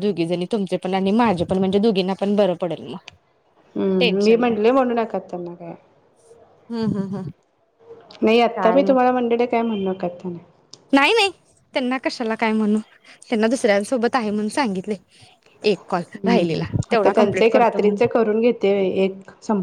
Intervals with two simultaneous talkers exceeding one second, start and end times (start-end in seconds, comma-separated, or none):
16.2-18.0